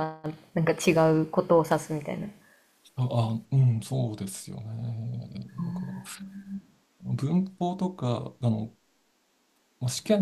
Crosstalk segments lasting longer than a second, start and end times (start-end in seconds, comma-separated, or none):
none